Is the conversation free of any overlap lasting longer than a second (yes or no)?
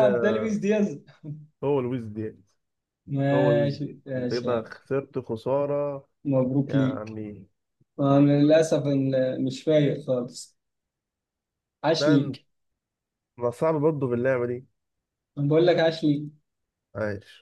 no